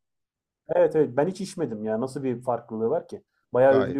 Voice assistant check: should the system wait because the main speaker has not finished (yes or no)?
no